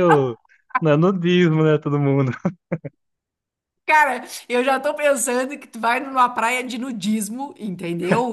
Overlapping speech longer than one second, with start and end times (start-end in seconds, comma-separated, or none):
none